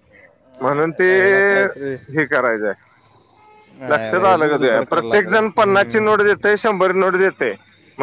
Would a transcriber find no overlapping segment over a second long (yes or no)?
no